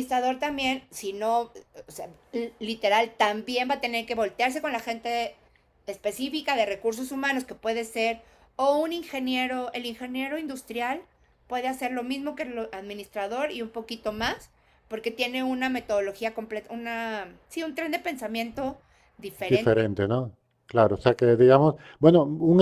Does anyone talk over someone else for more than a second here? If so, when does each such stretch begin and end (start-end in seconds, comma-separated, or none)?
none